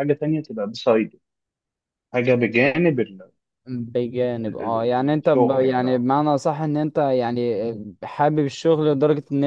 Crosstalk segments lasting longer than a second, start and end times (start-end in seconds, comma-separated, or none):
4.4-6.1